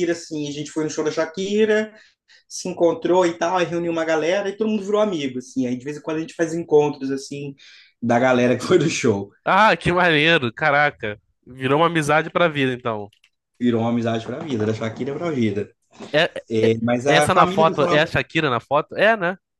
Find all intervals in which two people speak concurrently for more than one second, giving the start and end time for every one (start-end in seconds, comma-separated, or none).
16.6-18.1